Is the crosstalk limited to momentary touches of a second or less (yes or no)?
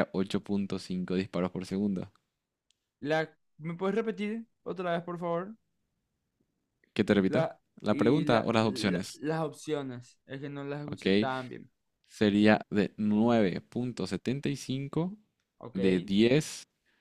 no